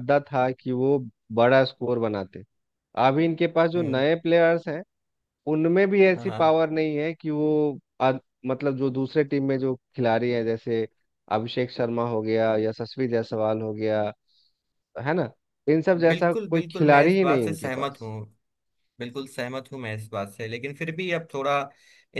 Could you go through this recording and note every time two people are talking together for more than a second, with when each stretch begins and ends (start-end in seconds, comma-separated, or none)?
16.1-18.1